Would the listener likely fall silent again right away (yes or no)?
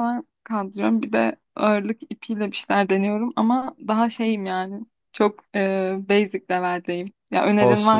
no